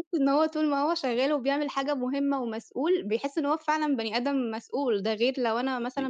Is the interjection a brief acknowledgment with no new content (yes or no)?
yes